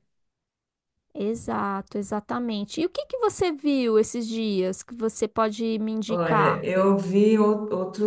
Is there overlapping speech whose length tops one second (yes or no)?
no